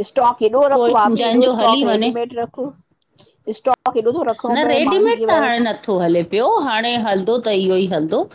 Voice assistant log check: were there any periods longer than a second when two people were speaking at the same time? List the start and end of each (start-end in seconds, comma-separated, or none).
0.7-2.1